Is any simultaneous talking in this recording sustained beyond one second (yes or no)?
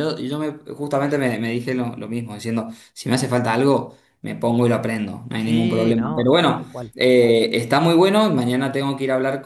yes